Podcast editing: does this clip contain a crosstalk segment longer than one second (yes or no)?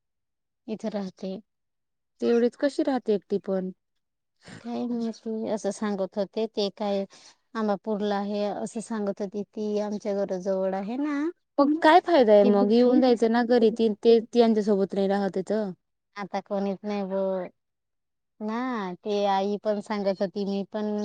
no